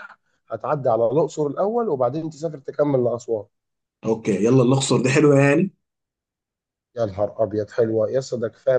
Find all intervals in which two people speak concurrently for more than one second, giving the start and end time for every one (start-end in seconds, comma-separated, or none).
none